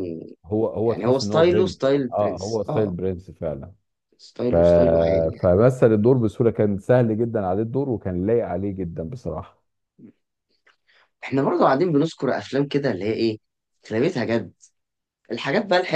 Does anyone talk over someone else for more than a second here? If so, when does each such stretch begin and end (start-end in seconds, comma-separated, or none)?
0.8-2.9